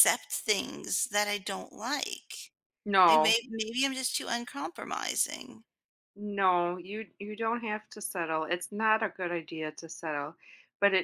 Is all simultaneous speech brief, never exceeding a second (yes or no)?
yes